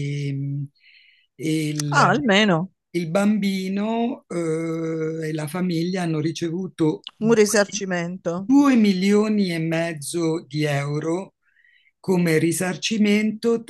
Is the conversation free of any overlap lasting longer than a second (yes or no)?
yes